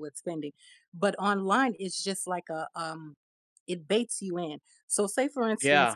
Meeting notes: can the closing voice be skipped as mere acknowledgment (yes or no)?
yes